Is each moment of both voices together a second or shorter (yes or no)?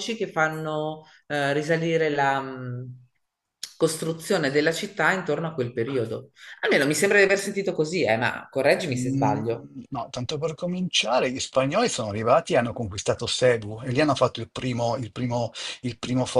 yes